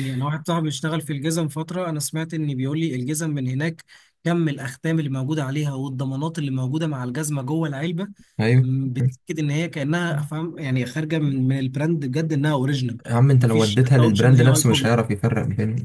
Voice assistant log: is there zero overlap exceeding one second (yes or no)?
no